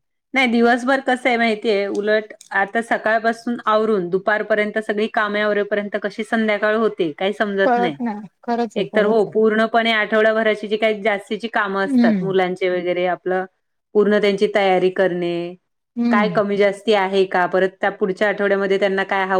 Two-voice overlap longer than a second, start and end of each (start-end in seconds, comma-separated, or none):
none